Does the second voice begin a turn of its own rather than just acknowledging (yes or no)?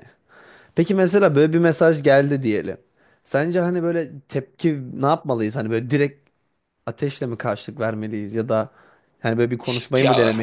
no